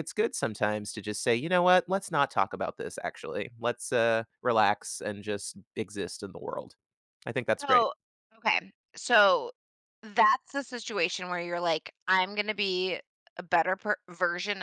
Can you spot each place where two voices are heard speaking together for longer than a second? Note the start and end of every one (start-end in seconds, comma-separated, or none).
none